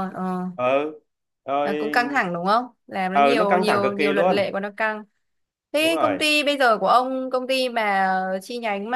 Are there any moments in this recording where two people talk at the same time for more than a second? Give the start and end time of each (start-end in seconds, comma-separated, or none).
3.1-4.5